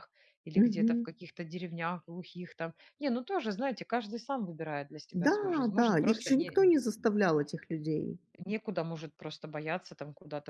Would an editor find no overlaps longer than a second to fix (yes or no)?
no